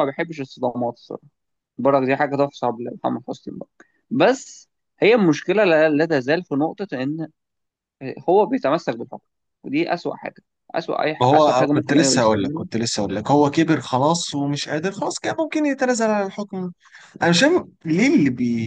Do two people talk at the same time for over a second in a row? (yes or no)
yes